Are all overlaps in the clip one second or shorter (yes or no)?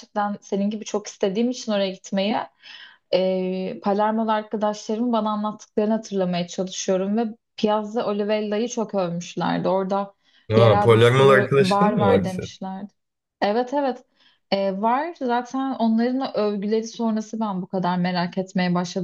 no